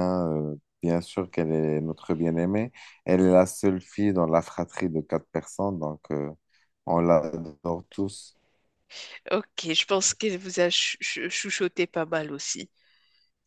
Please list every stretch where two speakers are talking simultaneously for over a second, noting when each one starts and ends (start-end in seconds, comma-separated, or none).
none